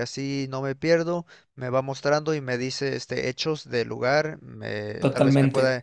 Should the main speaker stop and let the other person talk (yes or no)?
no